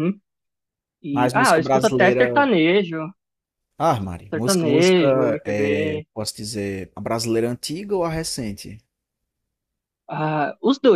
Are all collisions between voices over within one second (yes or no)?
no